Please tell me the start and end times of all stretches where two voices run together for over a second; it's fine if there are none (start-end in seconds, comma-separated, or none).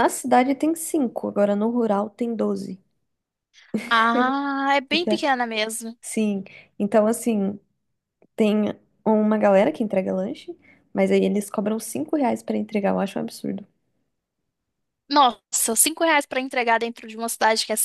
none